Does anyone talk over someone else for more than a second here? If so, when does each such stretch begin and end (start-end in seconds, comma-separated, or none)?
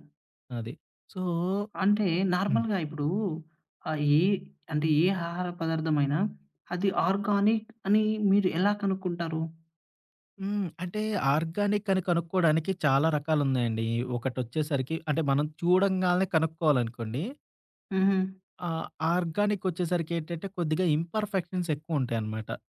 none